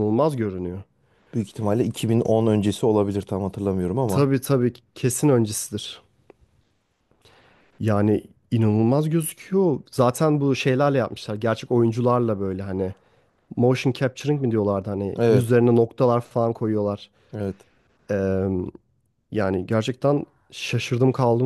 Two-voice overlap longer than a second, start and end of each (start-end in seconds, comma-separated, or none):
none